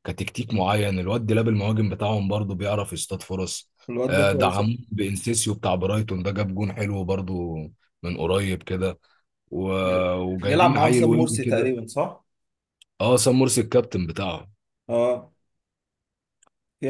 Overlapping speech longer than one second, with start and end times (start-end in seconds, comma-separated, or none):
10.4-11.7